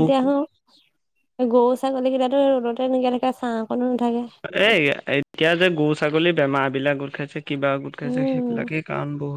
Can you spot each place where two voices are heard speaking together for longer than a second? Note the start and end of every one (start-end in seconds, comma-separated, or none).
none